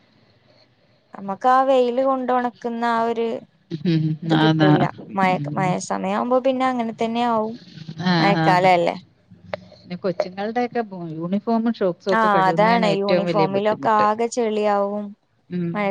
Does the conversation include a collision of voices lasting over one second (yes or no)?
yes